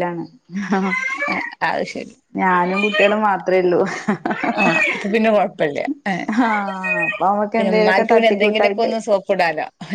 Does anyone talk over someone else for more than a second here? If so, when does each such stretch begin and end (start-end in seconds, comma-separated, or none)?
7.6-8.9